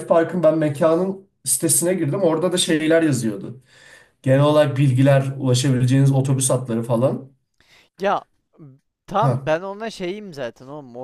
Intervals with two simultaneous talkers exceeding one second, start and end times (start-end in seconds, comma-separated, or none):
none